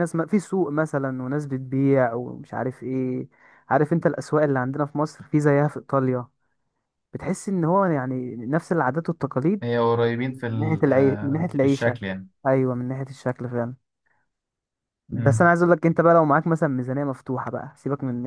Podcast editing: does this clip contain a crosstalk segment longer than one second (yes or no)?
no